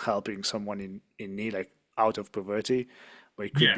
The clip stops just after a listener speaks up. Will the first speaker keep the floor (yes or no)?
yes